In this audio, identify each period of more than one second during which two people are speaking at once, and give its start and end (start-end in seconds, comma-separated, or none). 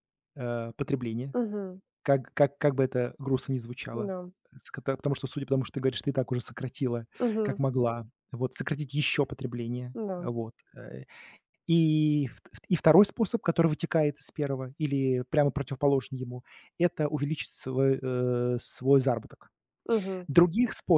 none